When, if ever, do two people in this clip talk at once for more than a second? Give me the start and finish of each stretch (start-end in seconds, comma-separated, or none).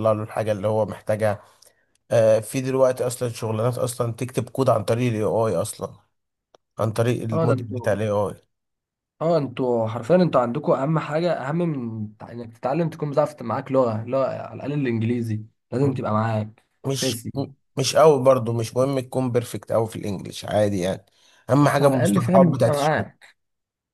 21.6-23.1